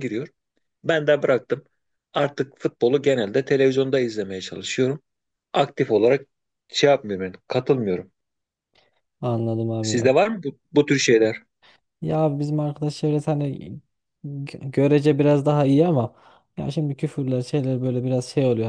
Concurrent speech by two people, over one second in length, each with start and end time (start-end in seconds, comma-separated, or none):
none